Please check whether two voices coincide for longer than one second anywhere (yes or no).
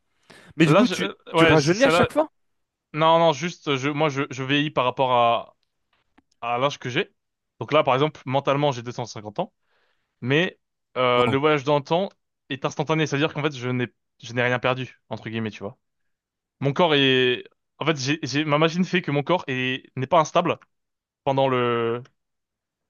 yes